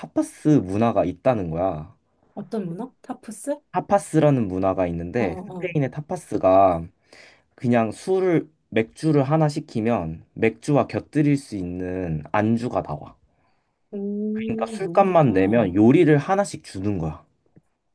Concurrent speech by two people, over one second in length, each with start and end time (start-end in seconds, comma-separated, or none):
14.3-15.7